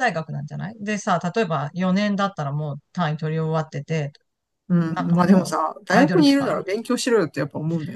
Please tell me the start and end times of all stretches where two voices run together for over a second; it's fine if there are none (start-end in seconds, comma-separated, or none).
4.8-6.9